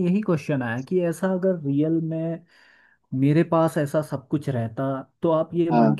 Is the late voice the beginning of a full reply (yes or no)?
no